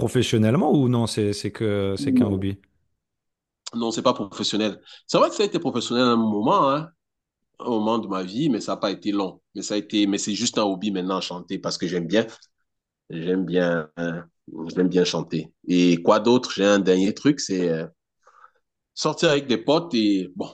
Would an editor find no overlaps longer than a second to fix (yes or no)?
yes